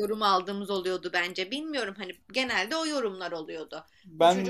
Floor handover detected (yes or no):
no